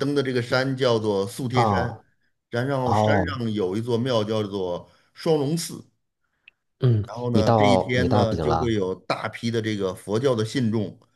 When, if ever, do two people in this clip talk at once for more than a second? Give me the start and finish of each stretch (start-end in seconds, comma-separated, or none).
7.0-8.7